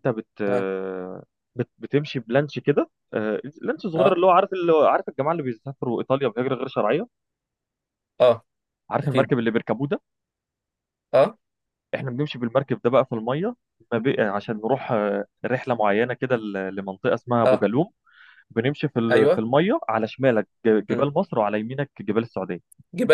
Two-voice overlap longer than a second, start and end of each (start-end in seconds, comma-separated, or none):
none